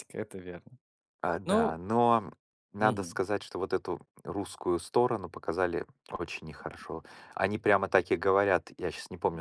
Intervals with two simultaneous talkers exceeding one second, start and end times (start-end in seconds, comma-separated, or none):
none